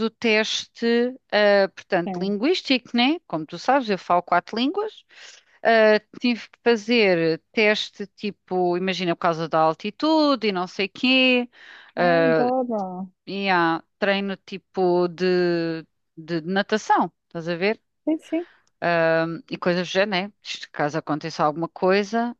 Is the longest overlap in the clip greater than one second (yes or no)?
no